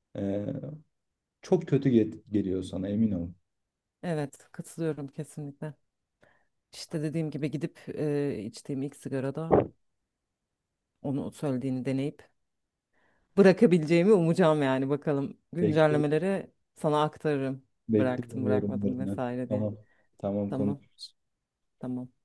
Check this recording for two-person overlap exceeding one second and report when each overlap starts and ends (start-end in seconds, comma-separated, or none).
17.9-19.7